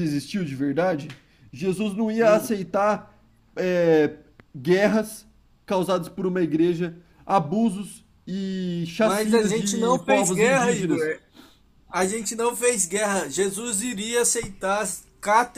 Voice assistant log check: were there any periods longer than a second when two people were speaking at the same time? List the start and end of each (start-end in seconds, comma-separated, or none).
9.0-11.1